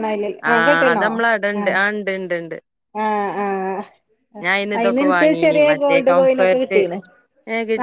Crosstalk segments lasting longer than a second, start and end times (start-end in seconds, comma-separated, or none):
4.8-6.8